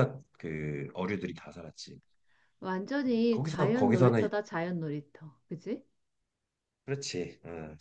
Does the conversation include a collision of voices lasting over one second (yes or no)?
yes